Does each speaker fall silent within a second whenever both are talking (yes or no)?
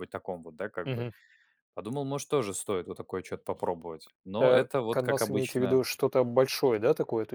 no